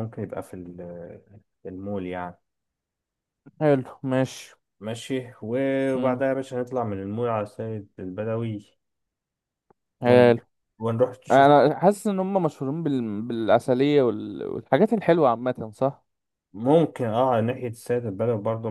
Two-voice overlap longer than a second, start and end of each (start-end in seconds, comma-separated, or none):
none